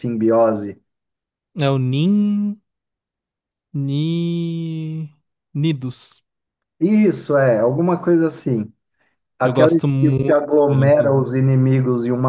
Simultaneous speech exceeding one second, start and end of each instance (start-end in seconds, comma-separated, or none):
9.4-11.4